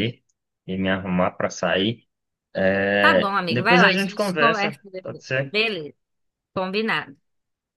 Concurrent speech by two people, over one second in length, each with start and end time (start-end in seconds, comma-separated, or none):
3.0-5.5